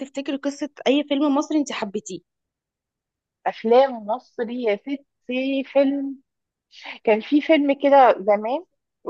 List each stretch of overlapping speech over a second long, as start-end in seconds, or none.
none